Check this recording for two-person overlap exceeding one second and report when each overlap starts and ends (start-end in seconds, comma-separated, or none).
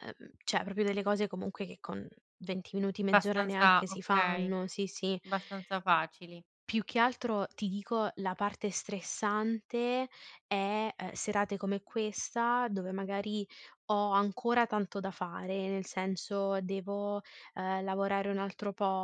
3.1-4.5